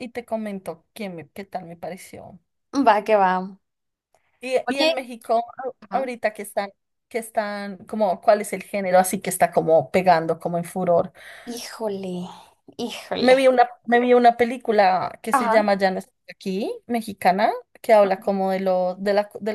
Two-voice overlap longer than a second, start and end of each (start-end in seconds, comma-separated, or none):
none